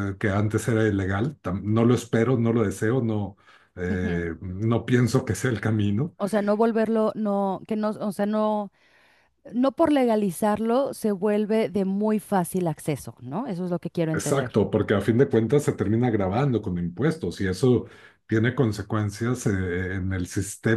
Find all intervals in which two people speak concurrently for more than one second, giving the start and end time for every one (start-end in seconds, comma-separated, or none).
none